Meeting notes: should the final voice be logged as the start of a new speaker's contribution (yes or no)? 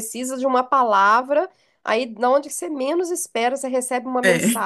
no